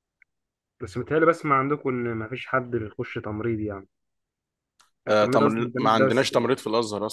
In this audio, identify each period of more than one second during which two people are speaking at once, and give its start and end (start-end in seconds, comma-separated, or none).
5.1-6.3